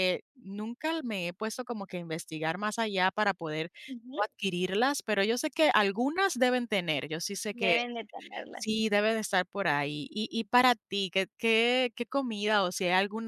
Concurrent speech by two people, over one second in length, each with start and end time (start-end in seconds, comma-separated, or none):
none